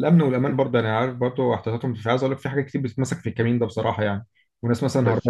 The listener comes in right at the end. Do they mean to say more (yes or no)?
no